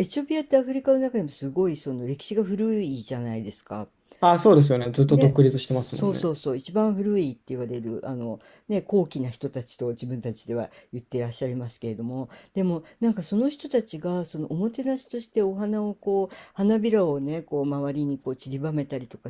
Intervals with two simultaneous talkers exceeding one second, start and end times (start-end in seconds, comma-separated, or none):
5.1-6.4